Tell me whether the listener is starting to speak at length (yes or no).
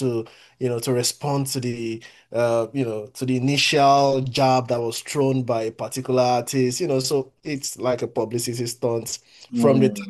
yes